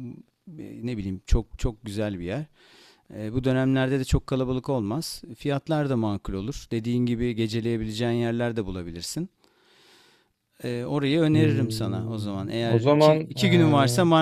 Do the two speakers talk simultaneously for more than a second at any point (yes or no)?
yes